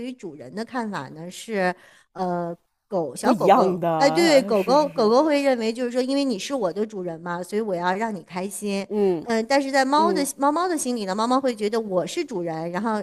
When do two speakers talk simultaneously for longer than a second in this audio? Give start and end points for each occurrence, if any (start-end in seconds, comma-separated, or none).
3.2-5.1